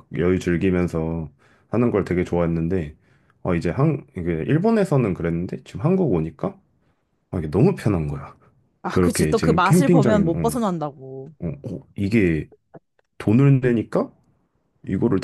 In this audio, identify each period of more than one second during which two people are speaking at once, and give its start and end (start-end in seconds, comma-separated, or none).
8.9-10.6